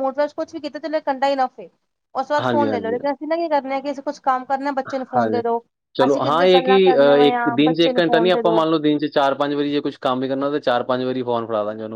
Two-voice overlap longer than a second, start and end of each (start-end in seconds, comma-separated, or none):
6.1-8.6